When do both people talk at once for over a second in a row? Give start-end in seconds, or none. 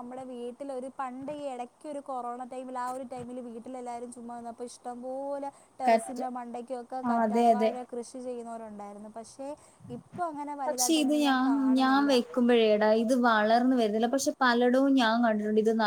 none